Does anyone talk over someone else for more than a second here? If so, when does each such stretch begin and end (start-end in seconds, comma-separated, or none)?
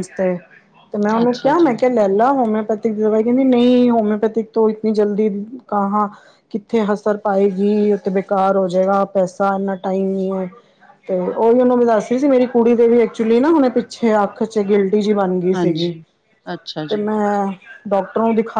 none